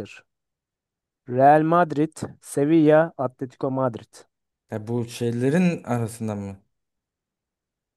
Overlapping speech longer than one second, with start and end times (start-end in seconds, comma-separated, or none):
none